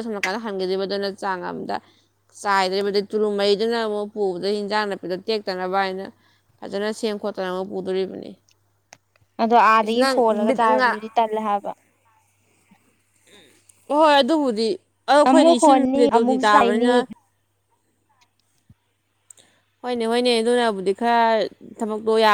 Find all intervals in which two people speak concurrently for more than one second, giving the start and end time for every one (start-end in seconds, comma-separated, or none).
15.3-16.9